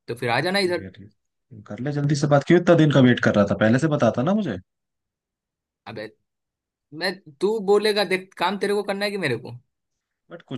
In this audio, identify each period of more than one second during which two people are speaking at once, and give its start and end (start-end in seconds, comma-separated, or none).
none